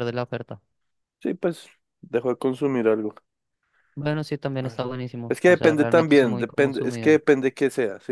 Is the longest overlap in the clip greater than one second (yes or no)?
yes